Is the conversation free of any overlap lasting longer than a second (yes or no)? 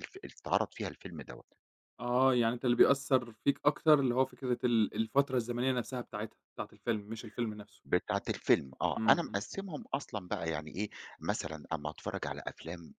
yes